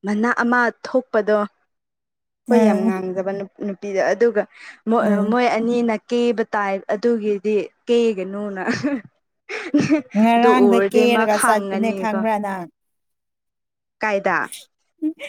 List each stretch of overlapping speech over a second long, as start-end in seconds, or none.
10.3-12.2